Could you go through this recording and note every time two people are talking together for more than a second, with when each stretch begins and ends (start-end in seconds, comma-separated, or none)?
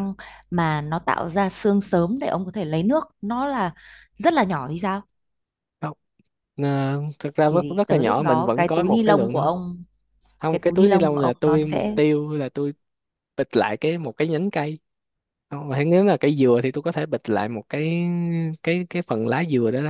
7.5-9.5, 10.5-12.0